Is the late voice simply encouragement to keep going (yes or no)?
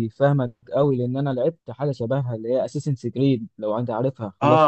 no